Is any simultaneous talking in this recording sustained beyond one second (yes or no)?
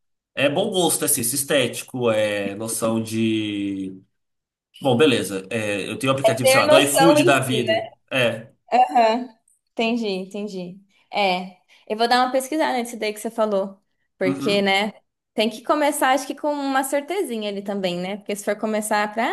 yes